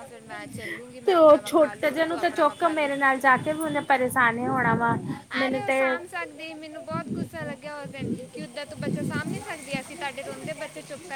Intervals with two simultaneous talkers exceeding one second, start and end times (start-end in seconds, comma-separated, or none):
1.1-2.9